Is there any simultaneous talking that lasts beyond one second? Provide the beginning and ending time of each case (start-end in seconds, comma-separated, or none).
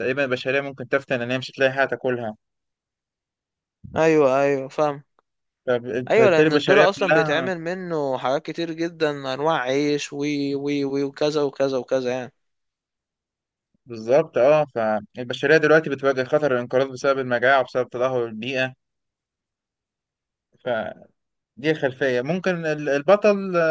6.1-7.5